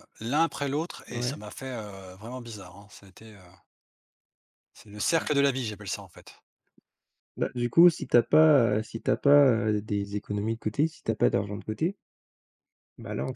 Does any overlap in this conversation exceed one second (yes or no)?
no